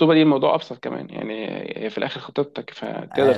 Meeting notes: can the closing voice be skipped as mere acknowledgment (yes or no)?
no